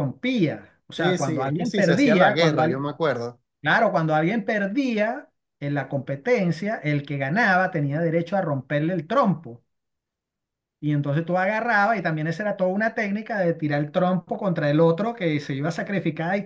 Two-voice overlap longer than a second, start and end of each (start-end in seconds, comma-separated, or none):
0.9-2.9